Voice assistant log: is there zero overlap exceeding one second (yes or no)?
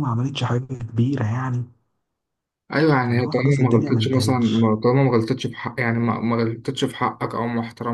no